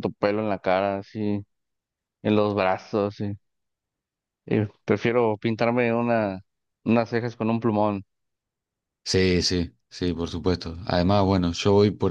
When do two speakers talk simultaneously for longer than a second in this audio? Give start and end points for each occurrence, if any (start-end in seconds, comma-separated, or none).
none